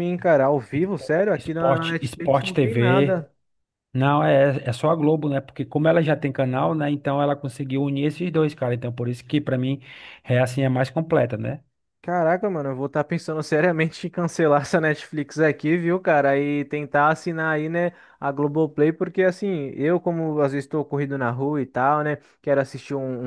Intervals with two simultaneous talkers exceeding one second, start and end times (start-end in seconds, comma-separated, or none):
0.7-3.2